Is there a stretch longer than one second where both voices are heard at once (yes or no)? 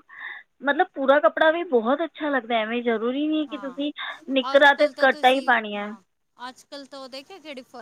no